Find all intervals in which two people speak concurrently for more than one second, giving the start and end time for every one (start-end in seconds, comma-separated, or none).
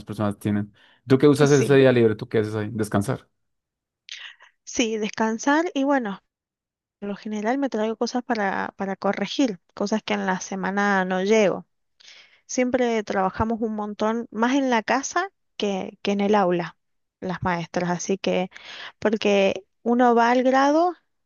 none